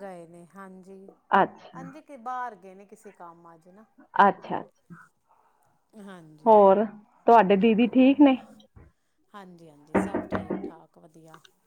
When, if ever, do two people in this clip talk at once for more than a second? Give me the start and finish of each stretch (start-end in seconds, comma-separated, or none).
none